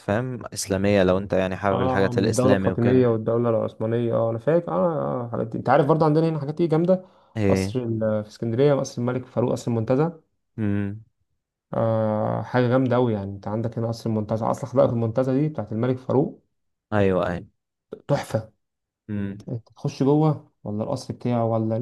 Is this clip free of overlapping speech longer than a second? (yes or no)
no